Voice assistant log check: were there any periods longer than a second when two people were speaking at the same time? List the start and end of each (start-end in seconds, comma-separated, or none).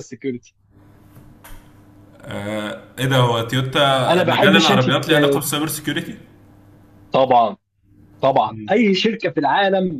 4.1-5.4